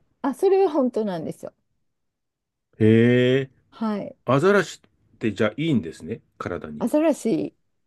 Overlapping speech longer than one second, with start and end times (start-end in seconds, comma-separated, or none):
none